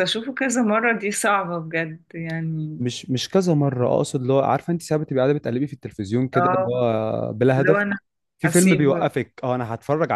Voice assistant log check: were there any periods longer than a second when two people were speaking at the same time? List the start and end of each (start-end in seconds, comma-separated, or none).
none